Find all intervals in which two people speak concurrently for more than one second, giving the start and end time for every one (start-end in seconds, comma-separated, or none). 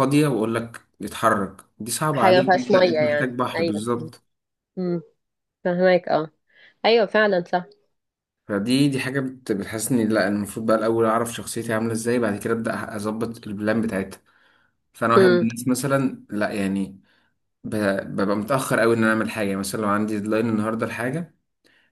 2.1-3.9